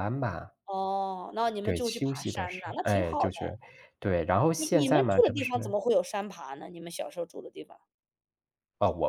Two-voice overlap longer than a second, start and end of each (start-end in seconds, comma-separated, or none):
1.6-3.3, 4.5-5.8